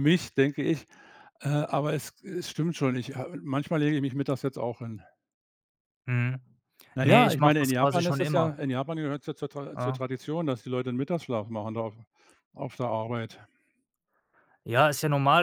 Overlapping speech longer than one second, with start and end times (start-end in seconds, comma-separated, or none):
7.0-8.6